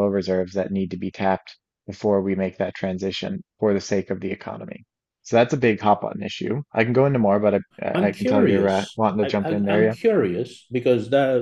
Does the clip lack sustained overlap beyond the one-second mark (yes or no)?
no